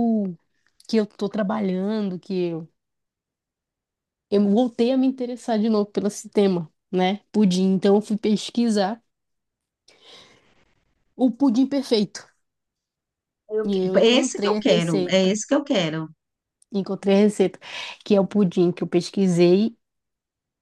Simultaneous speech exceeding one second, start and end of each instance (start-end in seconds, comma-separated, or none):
13.6-15.4